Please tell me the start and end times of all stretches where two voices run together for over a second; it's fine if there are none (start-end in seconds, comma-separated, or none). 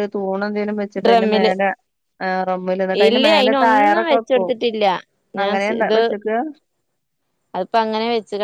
3.1-4.5